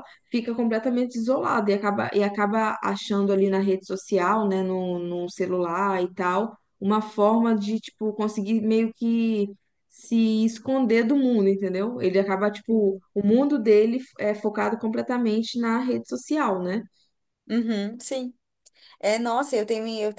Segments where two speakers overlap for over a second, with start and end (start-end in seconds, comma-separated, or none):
none